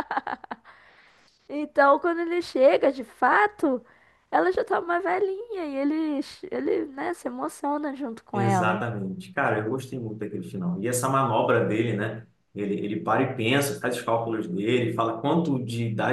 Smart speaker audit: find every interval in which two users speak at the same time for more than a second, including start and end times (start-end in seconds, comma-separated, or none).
none